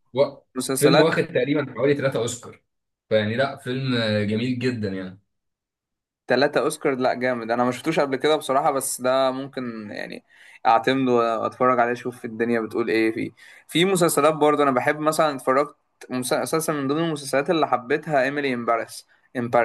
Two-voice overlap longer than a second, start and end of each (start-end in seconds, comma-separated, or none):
none